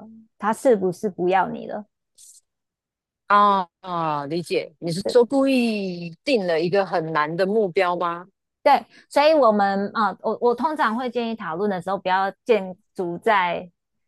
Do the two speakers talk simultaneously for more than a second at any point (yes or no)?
no